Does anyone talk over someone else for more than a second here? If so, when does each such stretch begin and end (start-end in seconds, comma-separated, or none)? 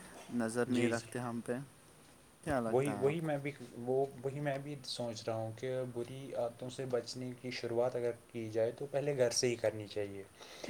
none